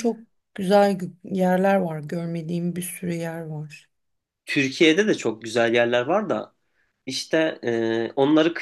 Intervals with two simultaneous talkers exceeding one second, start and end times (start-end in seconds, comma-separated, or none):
none